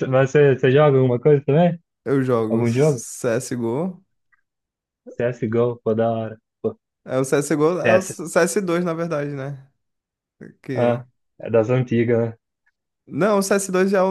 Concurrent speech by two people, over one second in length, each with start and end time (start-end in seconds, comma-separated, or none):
none